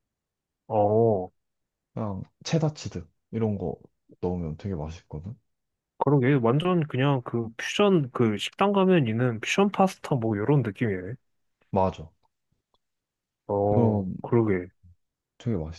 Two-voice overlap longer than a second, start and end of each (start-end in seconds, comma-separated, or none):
none